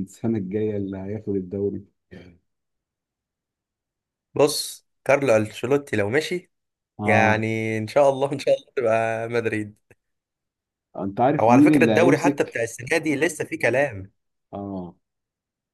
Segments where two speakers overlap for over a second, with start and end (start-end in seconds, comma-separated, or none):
11.4-12.7